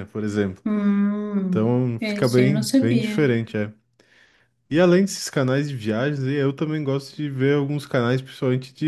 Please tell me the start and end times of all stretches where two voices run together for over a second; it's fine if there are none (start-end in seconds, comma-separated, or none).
1.5-3.2